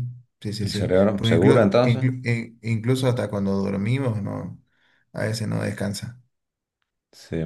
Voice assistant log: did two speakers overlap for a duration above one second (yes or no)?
yes